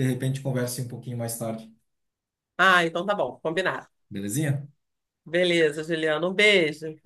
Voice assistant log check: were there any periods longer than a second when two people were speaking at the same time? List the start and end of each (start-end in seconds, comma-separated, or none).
none